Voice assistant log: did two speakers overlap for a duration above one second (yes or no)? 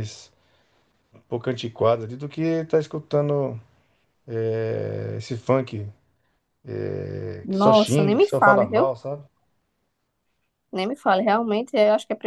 yes